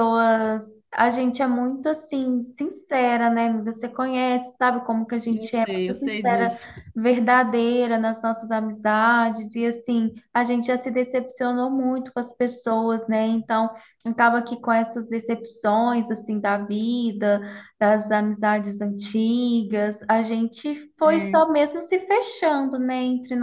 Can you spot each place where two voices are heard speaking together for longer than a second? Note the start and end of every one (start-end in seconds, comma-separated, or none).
5.3-6.6